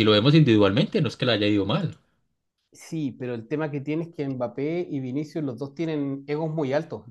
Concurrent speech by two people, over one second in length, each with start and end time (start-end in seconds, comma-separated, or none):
none